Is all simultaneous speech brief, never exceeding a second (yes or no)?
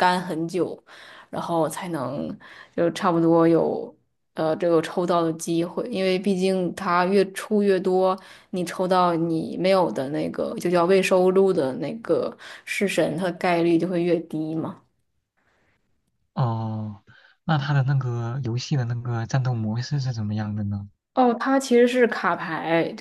yes